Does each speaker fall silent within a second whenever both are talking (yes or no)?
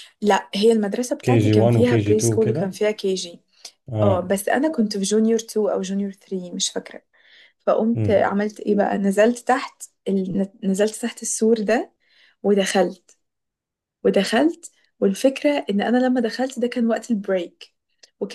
no